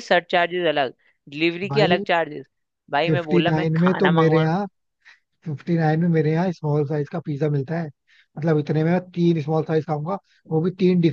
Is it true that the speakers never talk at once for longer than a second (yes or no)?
no